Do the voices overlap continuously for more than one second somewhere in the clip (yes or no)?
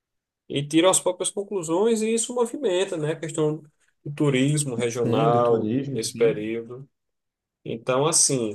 yes